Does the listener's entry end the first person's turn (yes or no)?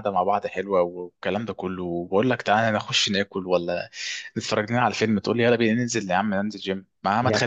no